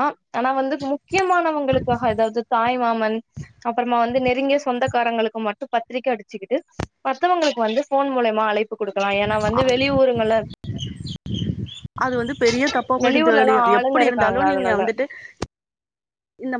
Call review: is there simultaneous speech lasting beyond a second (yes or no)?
yes